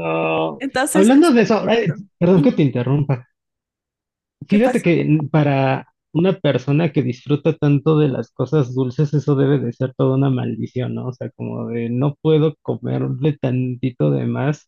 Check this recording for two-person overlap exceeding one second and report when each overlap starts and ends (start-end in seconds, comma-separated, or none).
0.6-2.6